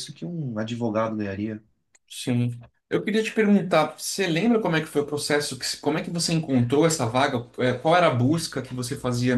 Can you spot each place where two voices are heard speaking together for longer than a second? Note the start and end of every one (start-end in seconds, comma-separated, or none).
none